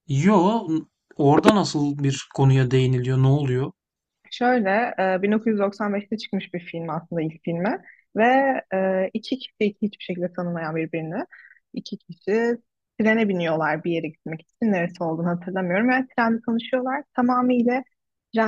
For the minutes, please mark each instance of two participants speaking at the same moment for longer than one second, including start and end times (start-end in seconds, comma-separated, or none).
none